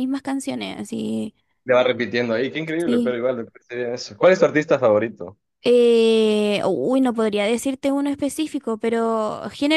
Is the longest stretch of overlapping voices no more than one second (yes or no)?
yes